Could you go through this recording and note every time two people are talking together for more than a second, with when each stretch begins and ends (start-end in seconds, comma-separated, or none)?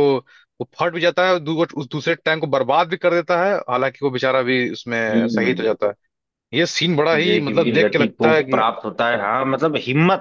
7.1-8.6